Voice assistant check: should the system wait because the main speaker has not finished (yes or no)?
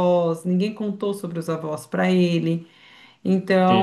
yes